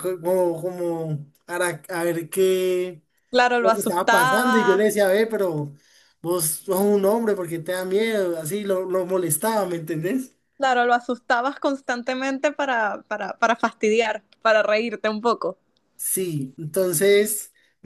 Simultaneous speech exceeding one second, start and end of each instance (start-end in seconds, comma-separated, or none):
3.6-4.9